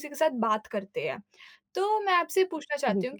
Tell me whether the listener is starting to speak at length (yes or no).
no